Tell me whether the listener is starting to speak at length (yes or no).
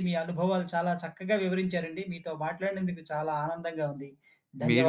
yes